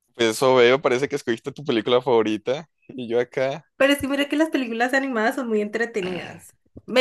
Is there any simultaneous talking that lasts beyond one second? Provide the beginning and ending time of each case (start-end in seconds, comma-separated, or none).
none